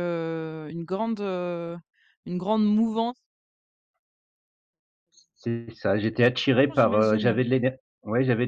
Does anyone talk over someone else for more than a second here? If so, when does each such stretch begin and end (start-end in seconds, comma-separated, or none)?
5.4-7.4